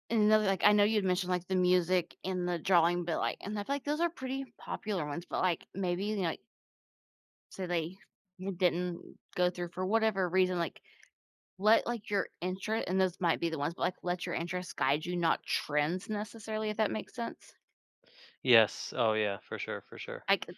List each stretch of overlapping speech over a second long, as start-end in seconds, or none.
none